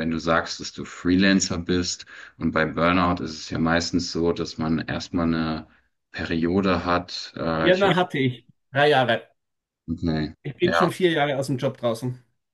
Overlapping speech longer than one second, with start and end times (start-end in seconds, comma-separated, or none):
none